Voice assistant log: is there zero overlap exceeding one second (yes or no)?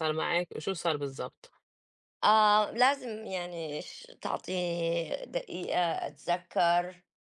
yes